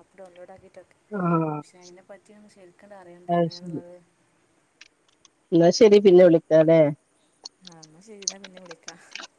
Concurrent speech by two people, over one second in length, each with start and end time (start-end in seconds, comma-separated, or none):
none